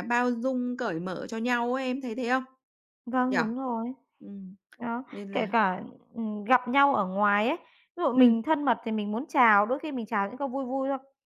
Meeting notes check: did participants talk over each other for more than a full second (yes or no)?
no